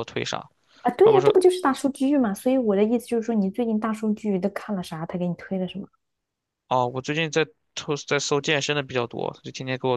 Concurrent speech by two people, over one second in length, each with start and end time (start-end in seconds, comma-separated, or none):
none